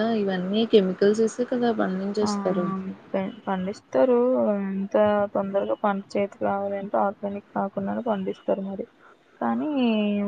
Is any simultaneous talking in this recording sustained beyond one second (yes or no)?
no